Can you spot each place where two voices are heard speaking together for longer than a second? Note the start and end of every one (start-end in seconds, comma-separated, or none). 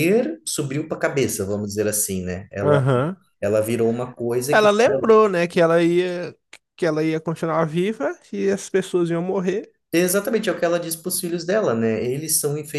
none